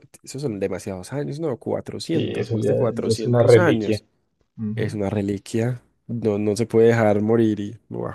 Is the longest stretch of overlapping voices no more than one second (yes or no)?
no